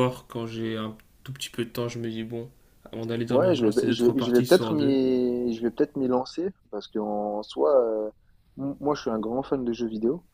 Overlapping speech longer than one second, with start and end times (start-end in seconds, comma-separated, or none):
3.3-5.0